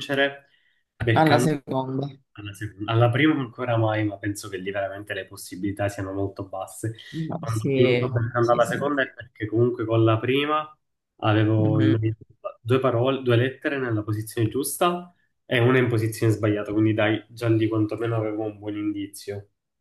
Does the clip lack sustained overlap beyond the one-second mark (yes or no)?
no